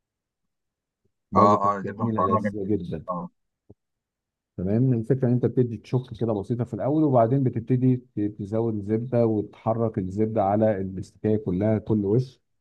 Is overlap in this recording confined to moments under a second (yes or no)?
no